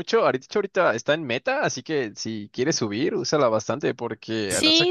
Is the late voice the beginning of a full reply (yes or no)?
yes